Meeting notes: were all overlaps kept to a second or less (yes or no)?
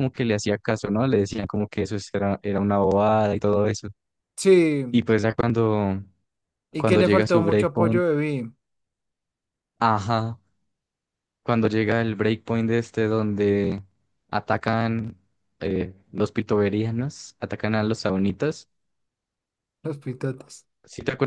no